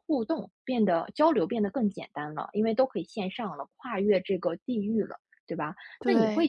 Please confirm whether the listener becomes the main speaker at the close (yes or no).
no